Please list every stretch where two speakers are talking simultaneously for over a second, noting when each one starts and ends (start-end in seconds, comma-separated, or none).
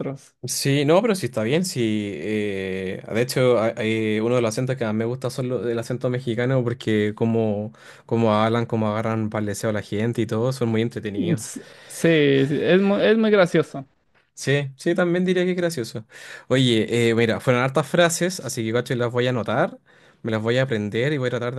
none